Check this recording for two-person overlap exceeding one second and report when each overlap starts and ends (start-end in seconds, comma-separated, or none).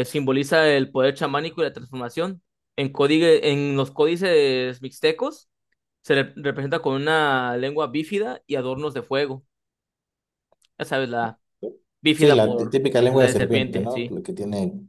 12.2-14.2